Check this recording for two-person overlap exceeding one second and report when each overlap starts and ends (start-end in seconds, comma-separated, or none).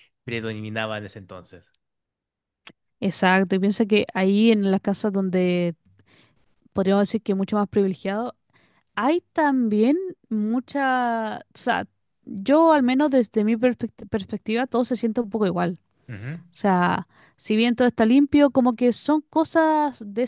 none